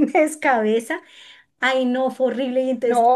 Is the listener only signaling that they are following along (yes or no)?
yes